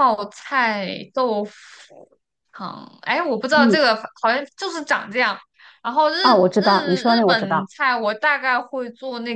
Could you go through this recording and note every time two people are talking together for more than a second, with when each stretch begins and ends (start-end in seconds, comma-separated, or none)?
6.2-7.7